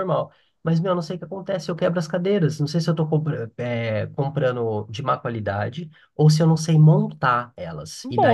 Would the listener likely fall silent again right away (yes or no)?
no